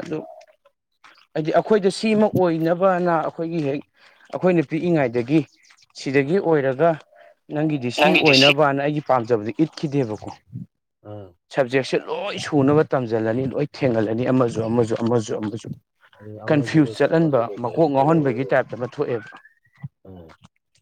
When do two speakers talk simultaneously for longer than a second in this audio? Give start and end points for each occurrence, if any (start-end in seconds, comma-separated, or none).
16.5-18.5